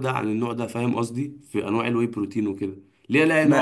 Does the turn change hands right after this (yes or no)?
no